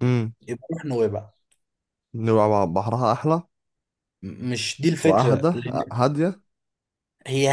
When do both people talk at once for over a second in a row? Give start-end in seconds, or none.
none